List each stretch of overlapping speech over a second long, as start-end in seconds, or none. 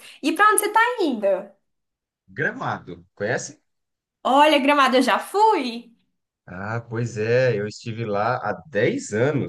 none